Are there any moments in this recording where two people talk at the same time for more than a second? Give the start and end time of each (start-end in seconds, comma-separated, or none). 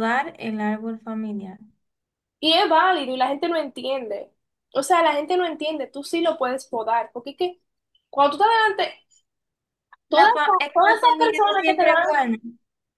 10.1-12.2